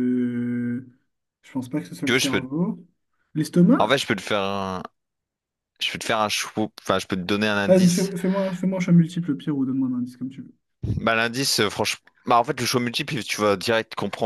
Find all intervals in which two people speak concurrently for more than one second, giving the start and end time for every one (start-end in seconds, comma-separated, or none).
none